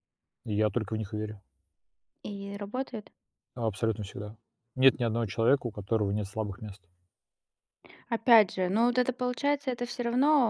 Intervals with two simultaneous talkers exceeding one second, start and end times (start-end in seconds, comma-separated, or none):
none